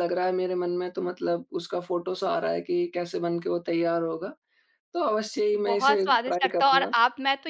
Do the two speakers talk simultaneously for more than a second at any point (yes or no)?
yes